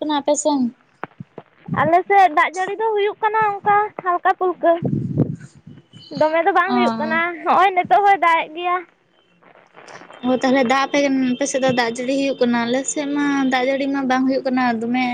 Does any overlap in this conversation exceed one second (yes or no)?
no